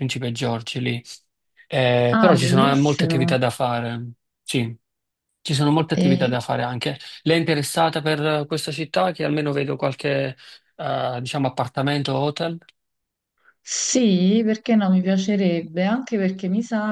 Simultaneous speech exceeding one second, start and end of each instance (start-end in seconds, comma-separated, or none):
2.1-3.4